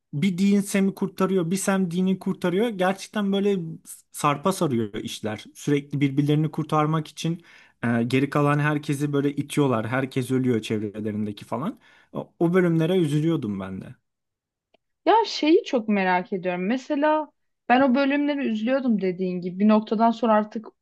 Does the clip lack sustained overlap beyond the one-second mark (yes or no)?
yes